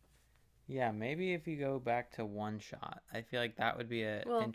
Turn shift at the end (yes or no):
no